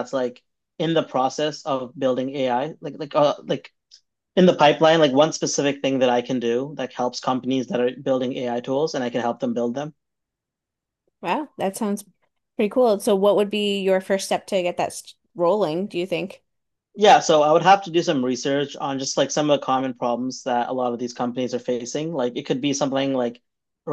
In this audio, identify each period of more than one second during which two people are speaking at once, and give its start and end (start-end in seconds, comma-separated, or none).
none